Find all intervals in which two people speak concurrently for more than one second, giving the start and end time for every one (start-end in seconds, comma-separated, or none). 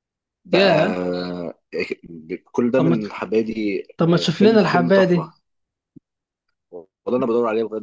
4.0-5.3